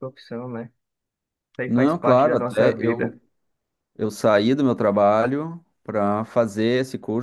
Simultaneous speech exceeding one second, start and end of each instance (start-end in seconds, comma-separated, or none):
1.7-3.2